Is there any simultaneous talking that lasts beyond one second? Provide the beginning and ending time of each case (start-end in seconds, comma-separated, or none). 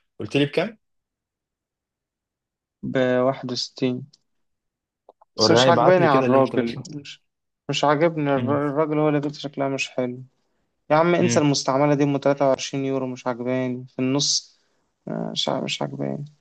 5.4-6.9